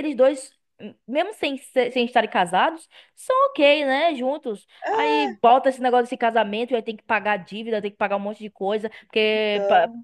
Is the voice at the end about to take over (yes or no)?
no